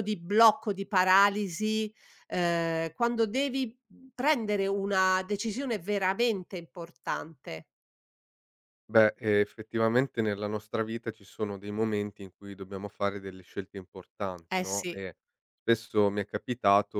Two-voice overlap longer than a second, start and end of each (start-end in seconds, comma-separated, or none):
none